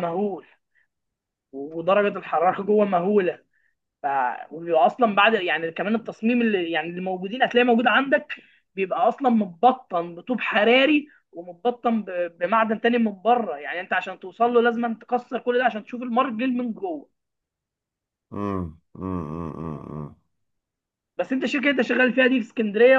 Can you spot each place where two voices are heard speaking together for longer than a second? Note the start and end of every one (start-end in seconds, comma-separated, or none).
none